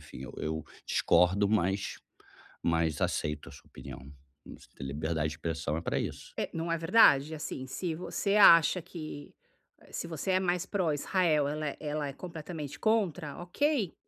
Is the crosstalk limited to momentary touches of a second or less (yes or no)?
yes